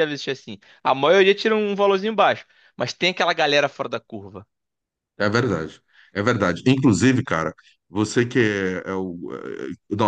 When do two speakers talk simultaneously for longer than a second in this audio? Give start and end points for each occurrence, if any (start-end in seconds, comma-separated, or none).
none